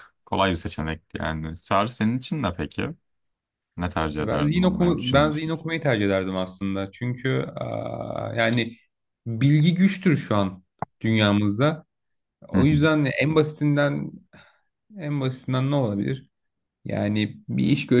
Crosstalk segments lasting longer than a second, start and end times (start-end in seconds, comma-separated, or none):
4.2-5.5